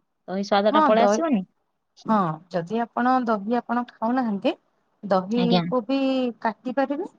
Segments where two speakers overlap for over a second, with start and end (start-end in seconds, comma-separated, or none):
none